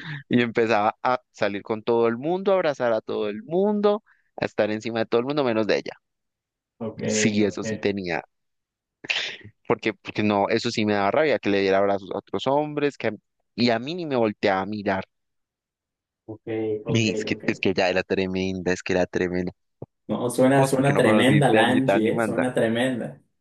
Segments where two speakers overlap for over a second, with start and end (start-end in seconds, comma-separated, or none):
20.5-22.4